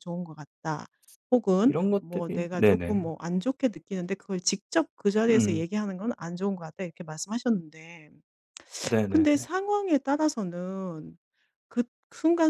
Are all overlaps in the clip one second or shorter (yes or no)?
no